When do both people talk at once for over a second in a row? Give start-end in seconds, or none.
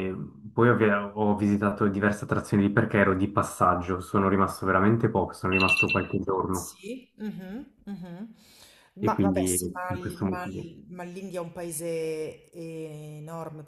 9.0-10.7